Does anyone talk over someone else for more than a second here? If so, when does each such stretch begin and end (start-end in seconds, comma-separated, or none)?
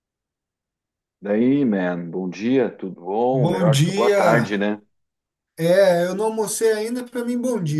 3.3-4.6